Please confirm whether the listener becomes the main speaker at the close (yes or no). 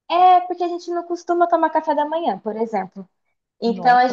no